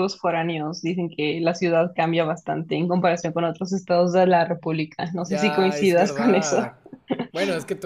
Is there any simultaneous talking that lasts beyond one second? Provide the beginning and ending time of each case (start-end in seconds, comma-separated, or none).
5.2-6.6